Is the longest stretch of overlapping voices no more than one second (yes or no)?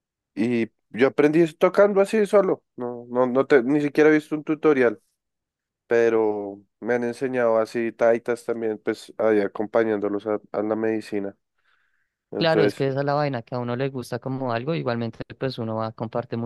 yes